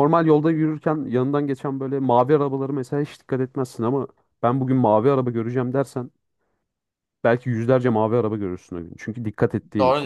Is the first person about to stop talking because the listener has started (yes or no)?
yes